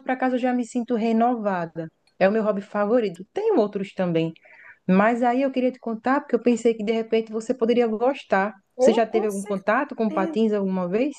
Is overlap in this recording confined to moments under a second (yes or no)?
no